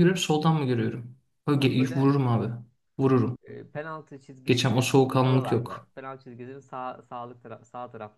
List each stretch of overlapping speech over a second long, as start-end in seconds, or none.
4.5-5.9